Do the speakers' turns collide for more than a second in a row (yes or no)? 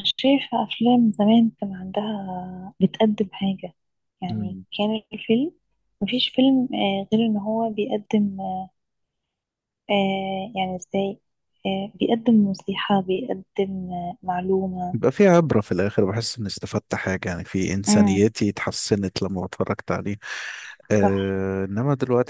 no